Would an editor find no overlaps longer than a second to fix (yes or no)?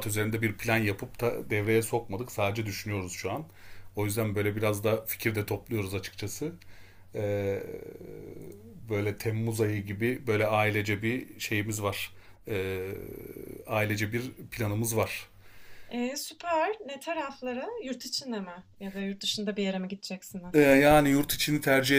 yes